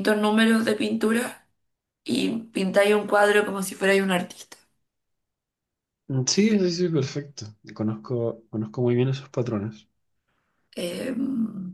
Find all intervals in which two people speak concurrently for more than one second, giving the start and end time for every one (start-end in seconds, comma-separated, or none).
none